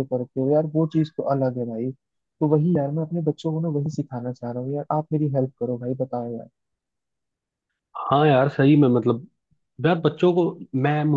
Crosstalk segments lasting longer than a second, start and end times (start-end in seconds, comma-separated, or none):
none